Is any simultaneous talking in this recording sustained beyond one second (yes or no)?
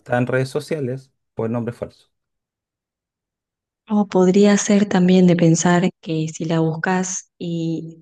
no